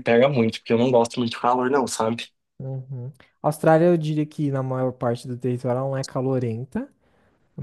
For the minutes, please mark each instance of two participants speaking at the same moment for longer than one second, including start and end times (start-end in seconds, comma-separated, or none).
none